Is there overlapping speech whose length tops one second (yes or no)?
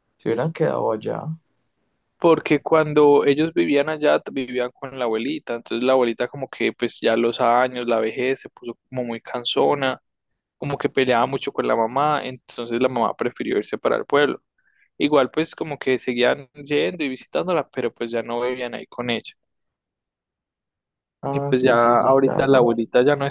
yes